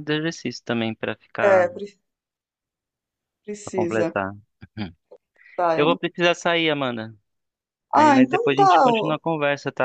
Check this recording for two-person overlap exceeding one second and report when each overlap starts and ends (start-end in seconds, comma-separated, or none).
7.9-9.2